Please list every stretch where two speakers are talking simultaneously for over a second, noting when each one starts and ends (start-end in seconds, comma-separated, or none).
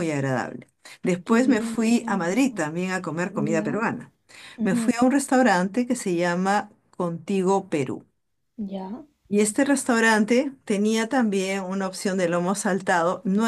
1.2-2.6